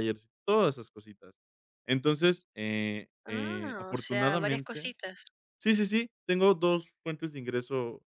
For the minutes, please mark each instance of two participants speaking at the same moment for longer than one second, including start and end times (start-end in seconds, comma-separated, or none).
3.3-4.9